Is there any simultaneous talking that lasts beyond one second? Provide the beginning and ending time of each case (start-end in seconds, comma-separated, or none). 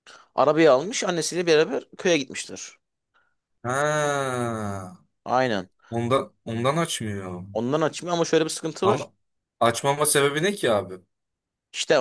none